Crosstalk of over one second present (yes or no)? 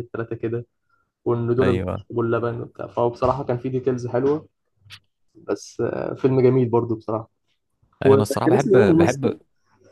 yes